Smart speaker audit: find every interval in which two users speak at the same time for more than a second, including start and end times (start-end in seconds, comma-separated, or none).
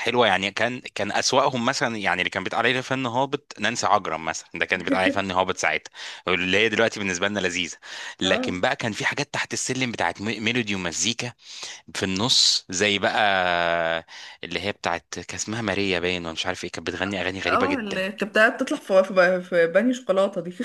none